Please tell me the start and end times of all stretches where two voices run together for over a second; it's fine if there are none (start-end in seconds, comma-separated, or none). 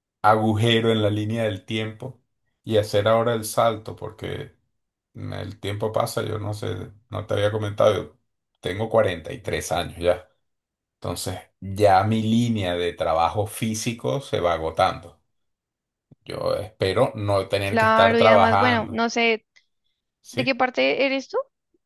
17.6-19.0